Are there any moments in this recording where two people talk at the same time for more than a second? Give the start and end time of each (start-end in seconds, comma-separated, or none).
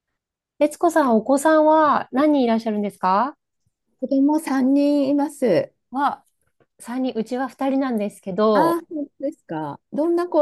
none